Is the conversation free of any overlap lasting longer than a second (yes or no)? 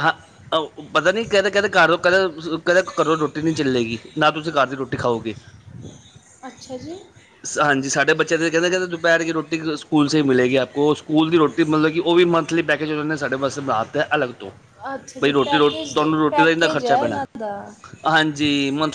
no